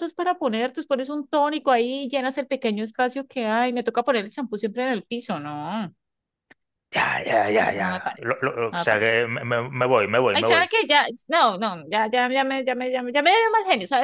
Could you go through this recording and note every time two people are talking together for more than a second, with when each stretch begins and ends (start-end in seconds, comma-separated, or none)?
7.6-9.1